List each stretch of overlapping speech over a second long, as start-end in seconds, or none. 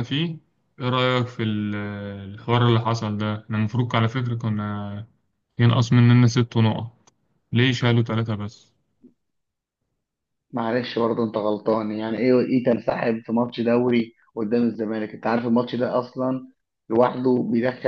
none